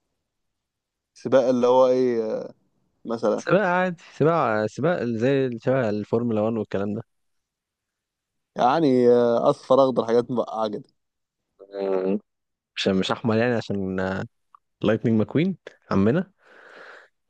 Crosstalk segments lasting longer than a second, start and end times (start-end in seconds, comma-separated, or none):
none